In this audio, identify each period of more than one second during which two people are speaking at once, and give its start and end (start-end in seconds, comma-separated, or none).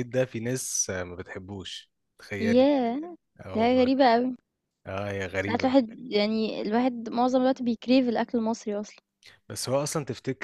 none